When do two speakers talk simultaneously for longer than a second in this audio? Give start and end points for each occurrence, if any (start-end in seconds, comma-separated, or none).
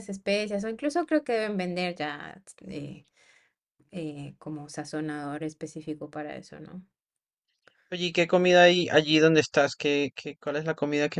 none